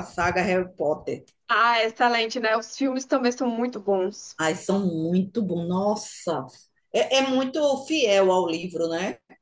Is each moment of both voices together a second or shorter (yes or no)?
yes